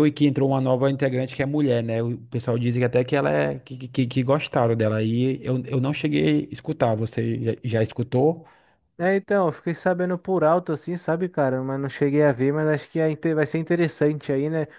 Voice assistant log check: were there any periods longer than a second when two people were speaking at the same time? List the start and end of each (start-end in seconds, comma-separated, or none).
none